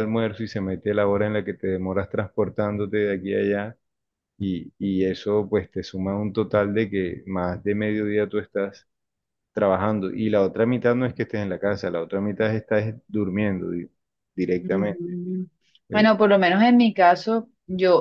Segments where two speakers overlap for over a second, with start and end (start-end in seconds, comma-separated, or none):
none